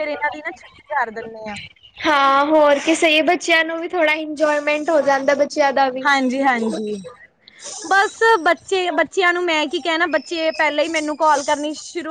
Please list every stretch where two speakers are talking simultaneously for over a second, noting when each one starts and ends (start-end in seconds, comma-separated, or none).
none